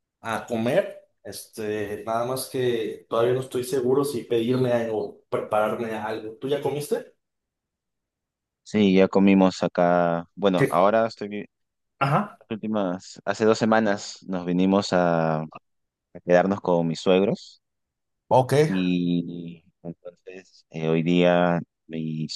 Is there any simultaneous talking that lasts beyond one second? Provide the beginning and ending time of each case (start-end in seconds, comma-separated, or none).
none